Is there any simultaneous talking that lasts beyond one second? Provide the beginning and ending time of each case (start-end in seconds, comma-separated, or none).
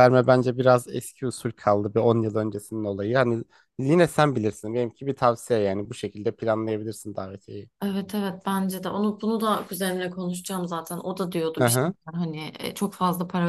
none